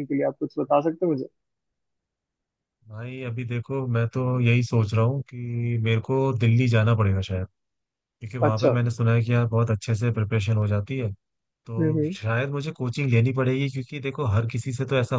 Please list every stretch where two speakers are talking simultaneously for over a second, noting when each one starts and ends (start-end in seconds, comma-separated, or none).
none